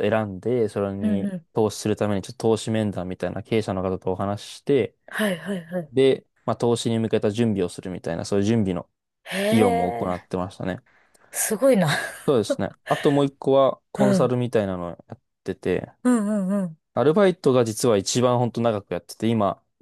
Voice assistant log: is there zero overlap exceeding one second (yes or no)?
yes